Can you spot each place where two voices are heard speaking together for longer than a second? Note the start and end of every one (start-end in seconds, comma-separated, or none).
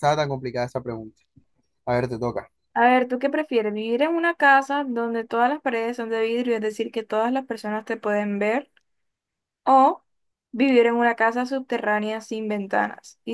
none